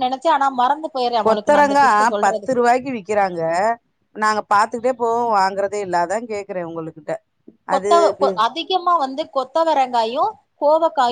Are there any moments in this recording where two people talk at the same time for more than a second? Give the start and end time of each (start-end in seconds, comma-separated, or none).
1.2-2.6